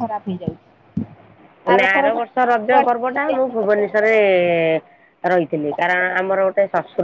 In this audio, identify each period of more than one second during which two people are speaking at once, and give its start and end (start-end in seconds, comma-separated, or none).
1.8-4.1